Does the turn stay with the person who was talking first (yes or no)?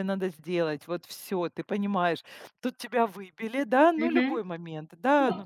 yes